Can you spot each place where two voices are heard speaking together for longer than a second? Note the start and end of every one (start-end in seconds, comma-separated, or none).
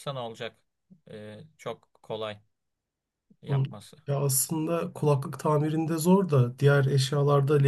none